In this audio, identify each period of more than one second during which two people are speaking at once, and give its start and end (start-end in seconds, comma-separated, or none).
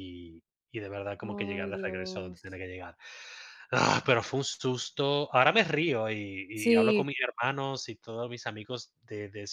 1.2-2.4